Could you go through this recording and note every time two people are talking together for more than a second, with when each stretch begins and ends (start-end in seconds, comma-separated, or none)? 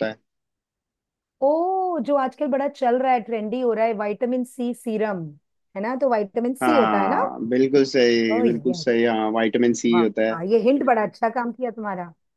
none